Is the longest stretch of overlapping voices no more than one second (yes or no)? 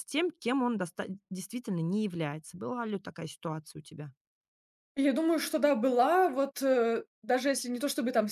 yes